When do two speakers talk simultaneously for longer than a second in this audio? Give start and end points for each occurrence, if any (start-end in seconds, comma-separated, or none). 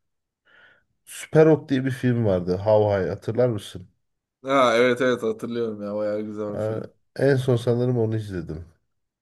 none